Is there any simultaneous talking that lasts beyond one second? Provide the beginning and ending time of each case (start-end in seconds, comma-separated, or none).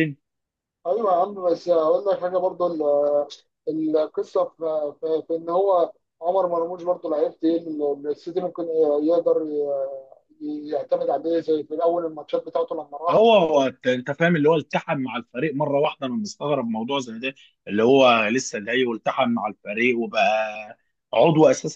none